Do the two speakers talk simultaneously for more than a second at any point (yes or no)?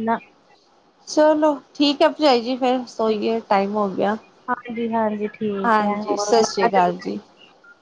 yes